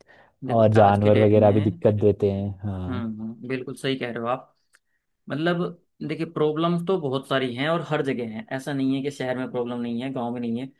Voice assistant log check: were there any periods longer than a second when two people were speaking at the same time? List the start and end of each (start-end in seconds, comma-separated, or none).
0.5-1.8